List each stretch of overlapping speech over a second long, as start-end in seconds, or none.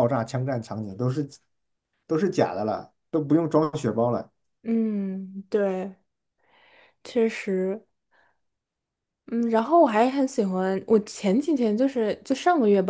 none